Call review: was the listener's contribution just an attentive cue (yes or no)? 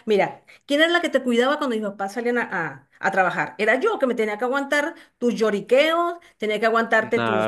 no